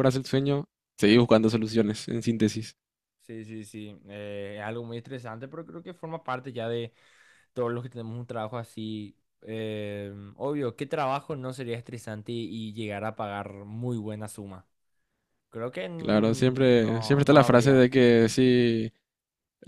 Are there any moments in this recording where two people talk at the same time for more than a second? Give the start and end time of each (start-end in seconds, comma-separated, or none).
16.0-17.9